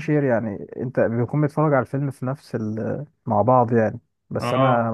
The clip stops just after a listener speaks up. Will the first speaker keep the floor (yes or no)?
yes